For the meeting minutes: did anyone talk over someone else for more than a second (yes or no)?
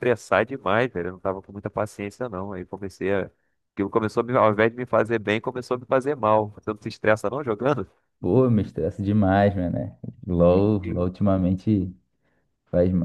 no